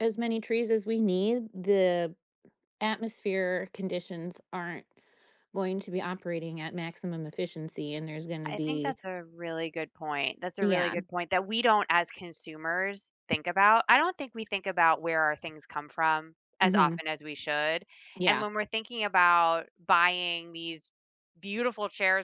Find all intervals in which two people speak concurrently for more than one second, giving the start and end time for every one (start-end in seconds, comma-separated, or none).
none